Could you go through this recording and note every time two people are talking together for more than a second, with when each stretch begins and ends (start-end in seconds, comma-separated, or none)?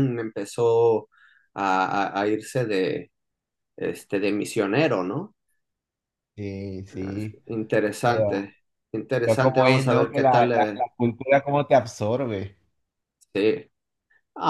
9.2-10.8